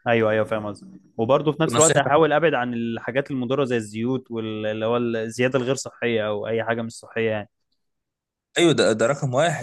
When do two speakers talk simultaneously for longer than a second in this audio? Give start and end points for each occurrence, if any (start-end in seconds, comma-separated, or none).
none